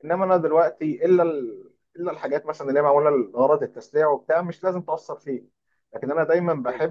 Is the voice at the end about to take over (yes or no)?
no